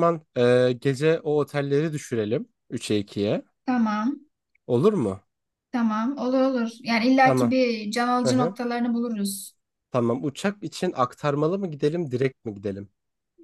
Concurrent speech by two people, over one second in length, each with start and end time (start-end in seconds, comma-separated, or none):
none